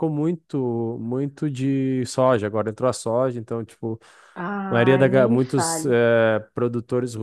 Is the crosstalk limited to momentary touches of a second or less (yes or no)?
no